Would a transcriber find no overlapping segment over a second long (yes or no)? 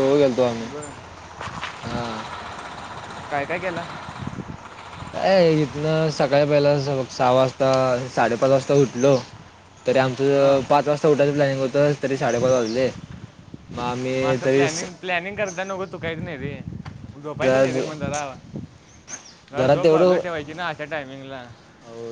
yes